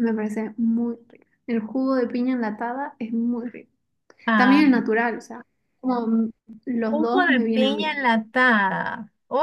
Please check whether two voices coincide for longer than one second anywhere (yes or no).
yes